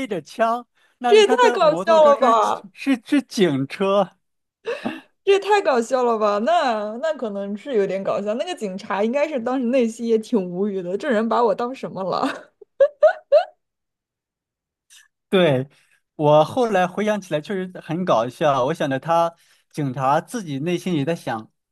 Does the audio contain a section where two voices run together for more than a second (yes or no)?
yes